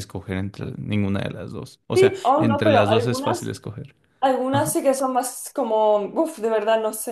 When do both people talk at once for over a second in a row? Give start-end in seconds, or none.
1.9-3.5